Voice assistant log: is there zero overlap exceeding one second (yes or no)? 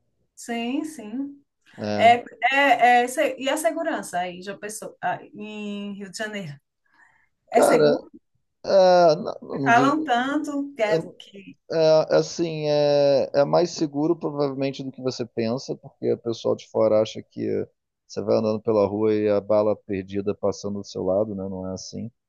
yes